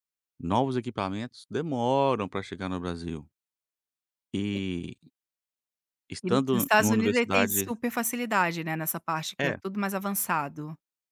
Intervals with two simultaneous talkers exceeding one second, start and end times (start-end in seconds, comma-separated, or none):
6.2-7.7